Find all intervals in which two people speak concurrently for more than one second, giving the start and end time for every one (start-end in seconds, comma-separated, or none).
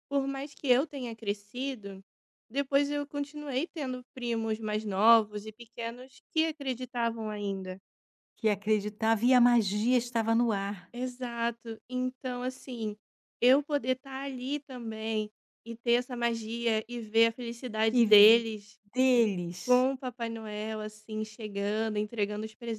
none